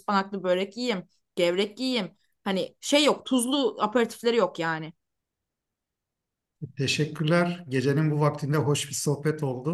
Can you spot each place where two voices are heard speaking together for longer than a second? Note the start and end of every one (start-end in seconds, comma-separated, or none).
none